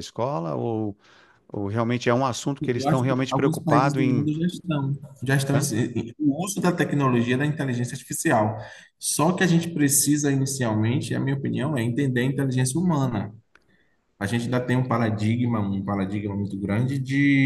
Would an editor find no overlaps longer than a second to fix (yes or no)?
no